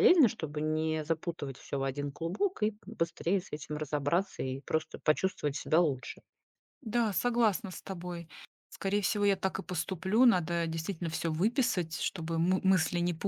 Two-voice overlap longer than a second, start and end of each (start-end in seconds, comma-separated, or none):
none